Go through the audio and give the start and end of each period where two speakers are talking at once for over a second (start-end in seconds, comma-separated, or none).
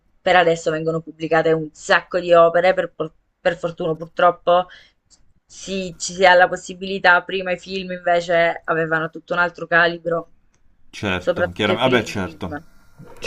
11.2-12.6